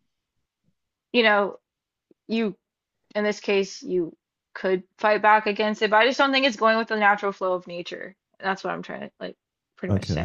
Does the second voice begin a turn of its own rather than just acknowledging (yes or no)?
yes